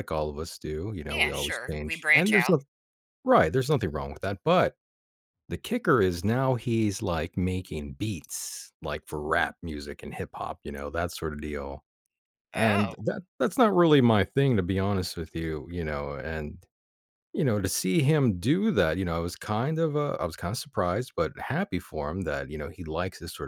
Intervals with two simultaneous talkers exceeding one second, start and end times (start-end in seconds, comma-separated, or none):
1.1-2.5